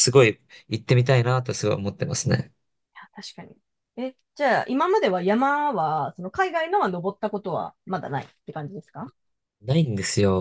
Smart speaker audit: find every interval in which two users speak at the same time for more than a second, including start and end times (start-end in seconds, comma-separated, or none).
none